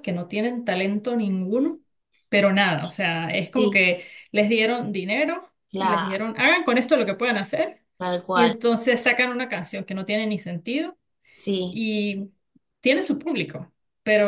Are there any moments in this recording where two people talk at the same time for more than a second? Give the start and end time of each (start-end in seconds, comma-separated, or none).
none